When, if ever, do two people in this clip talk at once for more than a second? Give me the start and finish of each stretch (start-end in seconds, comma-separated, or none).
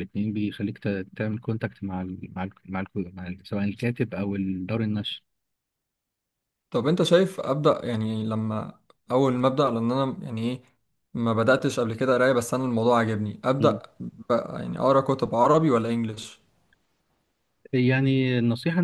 none